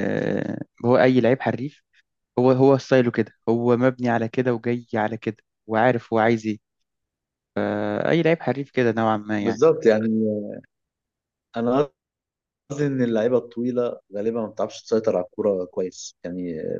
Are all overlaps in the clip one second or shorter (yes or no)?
yes